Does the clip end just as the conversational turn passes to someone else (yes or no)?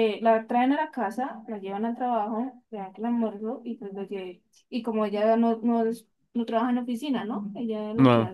no